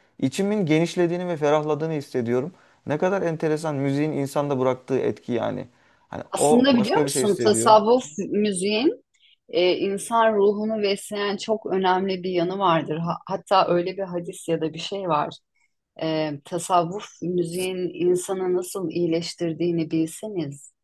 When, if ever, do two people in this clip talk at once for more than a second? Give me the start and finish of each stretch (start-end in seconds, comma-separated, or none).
6.3-7.8